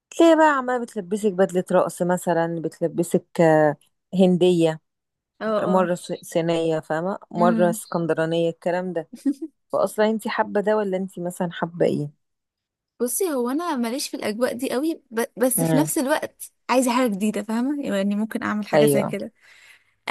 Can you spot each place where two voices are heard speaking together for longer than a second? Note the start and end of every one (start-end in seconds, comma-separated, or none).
none